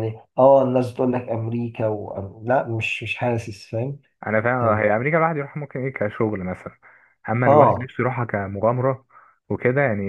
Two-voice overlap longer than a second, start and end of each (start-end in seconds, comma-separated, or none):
none